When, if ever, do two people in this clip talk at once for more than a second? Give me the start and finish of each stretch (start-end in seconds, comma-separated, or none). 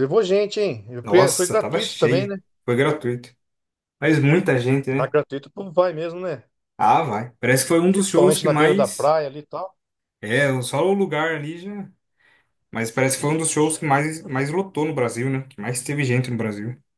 1.0-2.4, 7.9-9.1